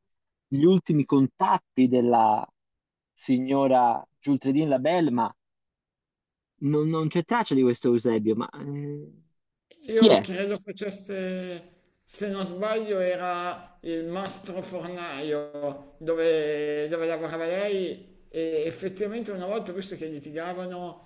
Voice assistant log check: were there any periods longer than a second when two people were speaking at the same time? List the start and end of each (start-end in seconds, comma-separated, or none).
none